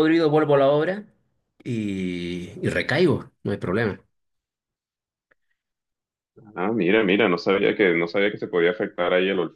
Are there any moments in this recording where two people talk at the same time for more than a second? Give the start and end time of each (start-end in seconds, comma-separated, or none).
none